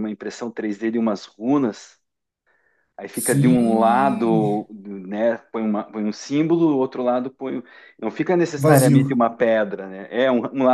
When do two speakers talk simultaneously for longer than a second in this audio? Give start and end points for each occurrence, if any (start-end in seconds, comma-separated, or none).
3.1-4.5